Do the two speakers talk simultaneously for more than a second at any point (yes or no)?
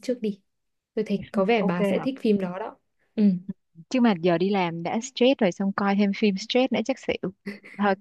no